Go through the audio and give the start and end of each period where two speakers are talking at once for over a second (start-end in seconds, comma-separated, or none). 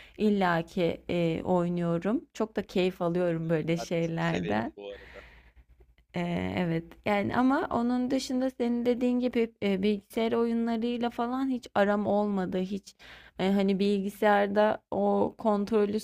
3.0-4.7